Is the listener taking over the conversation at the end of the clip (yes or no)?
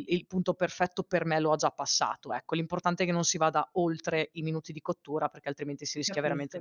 yes